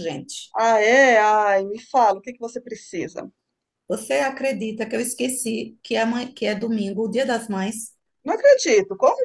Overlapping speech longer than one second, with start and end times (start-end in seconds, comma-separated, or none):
none